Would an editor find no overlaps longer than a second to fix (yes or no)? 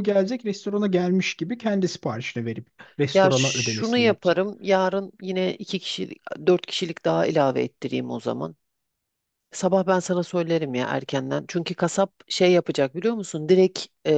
no